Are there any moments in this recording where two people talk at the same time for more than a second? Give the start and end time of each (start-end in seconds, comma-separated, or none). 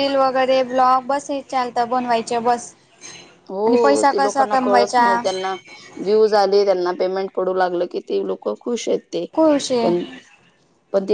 3.7-5.2